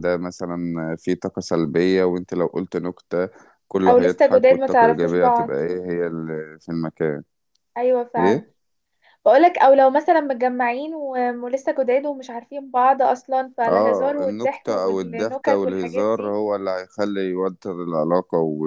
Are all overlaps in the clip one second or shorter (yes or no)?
no